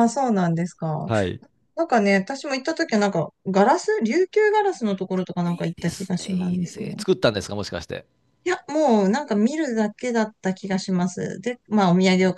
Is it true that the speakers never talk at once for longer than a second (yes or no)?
no